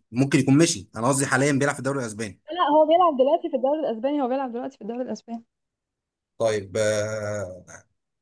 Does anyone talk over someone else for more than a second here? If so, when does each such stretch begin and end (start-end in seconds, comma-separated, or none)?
none